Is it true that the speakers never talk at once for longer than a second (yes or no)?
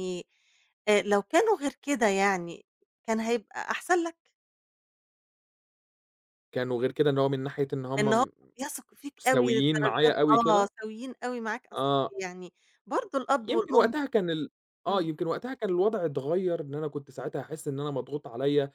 no